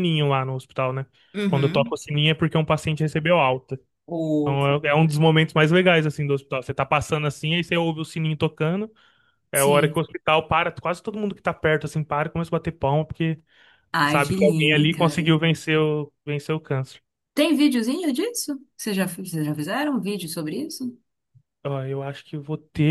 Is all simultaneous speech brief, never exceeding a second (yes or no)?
no